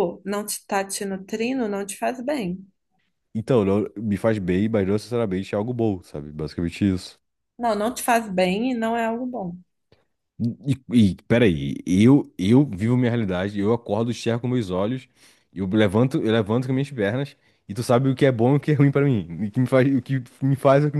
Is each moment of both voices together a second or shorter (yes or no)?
yes